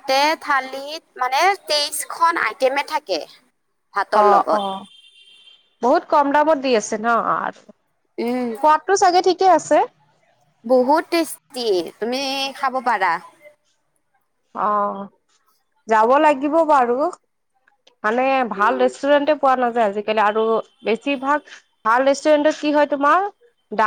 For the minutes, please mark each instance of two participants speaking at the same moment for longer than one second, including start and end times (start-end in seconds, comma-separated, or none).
none